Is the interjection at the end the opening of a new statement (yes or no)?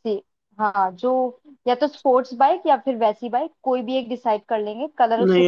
yes